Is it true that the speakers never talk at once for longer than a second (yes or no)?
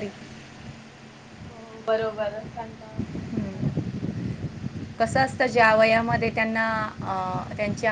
yes